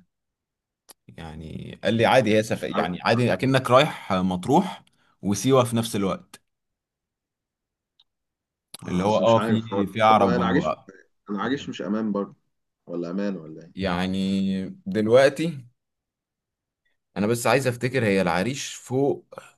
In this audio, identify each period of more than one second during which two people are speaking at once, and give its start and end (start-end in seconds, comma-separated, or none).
8.9-10.7